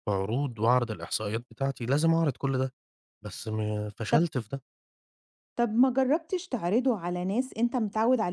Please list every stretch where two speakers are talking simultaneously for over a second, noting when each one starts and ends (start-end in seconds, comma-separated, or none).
none